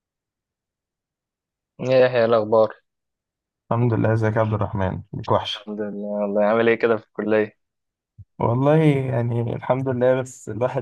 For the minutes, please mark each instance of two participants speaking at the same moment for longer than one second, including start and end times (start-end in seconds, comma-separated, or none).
none